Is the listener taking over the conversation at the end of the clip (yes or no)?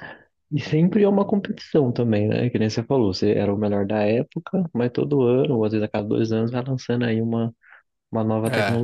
yes